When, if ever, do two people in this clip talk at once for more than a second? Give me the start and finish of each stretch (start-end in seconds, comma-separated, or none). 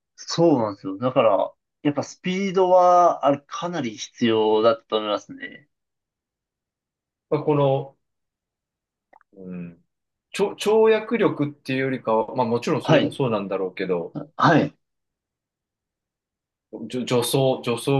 none